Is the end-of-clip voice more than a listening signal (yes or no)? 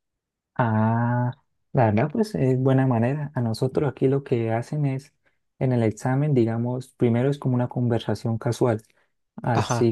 no